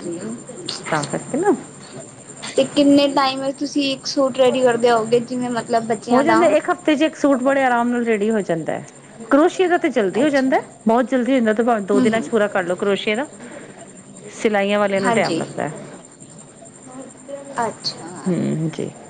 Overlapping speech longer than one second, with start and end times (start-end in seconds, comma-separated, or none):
none